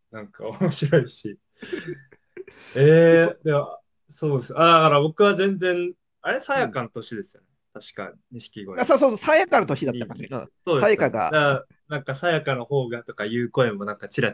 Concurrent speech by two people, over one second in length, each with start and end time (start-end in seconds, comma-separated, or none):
9.8-11.6